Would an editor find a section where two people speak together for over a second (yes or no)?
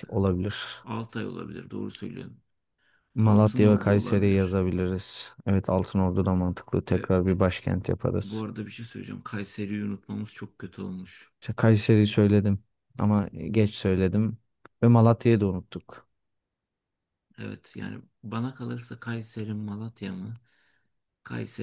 yes